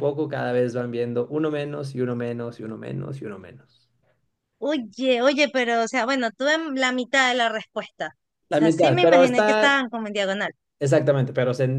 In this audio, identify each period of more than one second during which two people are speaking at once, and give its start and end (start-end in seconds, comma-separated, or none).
8.5-9.8